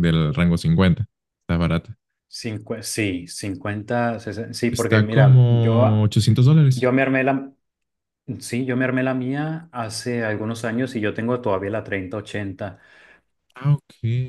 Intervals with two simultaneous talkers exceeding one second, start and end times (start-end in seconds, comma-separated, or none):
4.7-6.1